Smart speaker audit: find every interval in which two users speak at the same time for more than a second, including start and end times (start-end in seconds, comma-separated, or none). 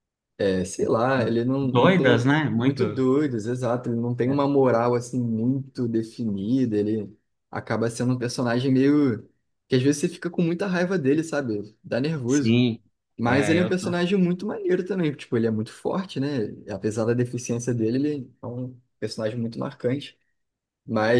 1.6-3.0